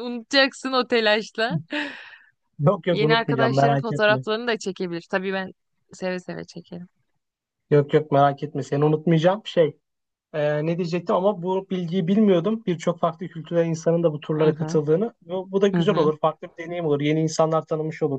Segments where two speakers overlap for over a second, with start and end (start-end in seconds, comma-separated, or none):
2.9-4.2